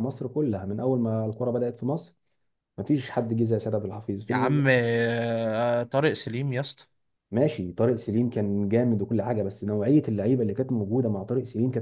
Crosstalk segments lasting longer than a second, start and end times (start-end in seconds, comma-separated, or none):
none